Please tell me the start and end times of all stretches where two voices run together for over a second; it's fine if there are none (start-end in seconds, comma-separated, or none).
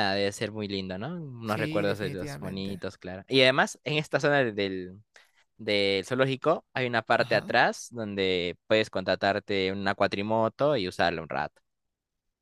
1.4-2.8